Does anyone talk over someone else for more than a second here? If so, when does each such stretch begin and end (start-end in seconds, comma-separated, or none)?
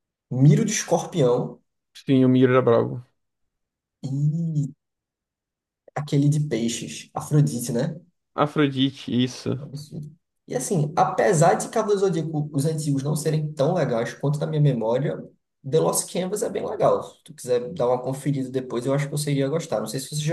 none